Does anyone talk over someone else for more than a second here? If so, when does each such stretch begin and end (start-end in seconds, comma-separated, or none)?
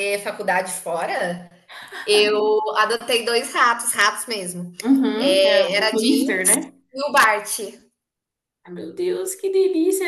5.2-6.5